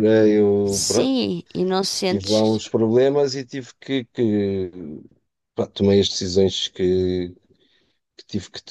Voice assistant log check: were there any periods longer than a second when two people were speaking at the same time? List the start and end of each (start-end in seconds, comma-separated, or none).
none